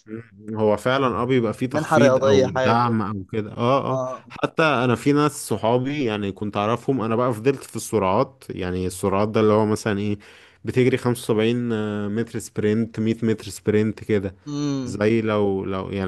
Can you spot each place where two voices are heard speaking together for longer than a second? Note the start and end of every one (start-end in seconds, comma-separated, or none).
1.7-3.0